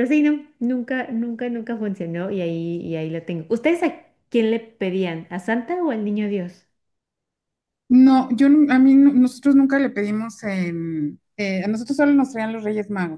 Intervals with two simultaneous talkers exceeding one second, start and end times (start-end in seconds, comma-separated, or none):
none